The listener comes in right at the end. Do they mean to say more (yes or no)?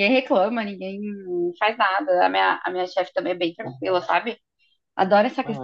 no